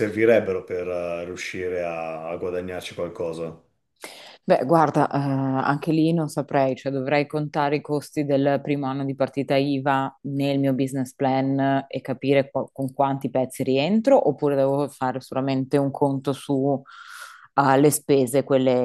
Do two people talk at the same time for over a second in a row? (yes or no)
no